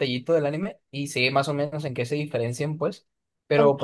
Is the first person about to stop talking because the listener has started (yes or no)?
no